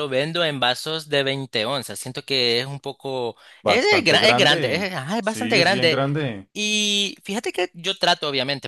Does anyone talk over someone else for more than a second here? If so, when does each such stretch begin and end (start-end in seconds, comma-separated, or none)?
3.6-6.0